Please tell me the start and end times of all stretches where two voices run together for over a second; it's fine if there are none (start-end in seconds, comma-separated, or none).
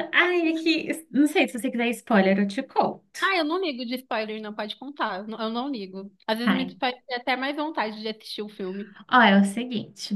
none